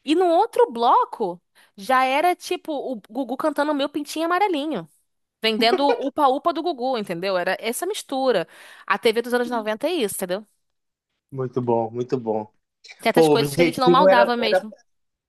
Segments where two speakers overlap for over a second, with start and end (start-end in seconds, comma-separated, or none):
13.1-14.7